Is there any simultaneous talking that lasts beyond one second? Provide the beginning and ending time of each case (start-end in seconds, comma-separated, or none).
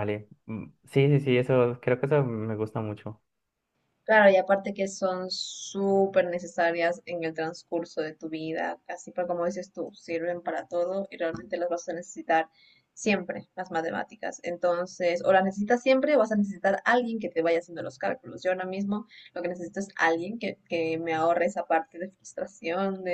none